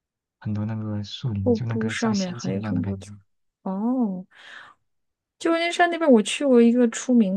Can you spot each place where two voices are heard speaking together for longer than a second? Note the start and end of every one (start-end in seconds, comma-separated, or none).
1.4-3.1